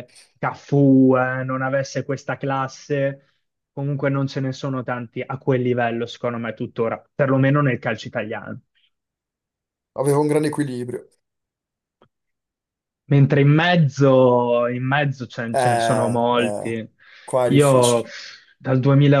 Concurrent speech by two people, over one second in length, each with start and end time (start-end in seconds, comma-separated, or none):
15.5-16.7